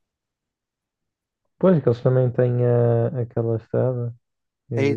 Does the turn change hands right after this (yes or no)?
yes